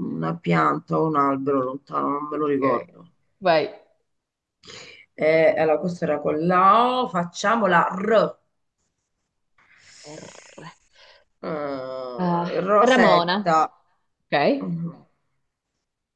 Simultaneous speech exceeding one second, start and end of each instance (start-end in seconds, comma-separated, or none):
12.2-13.6